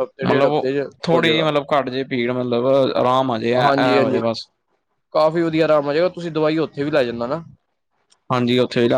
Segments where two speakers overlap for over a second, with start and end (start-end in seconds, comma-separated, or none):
none